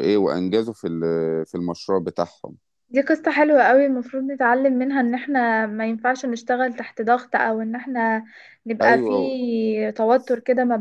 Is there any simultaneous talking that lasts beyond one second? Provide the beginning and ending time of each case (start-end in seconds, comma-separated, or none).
none